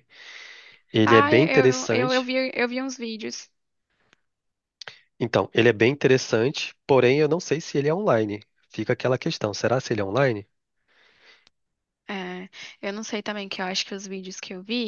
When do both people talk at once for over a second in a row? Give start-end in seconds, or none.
1.0-2.3